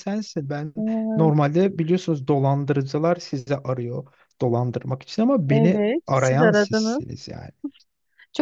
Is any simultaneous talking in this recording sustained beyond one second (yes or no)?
yes